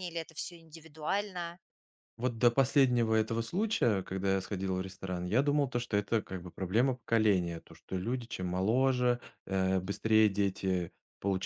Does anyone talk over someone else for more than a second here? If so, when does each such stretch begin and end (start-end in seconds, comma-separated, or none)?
none